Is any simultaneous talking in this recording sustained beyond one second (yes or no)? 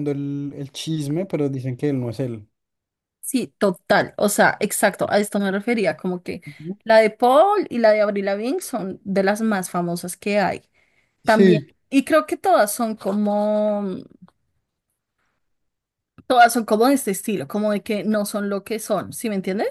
no